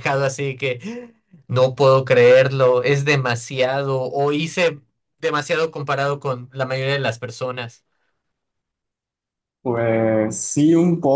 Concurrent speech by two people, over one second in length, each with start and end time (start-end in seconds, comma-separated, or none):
none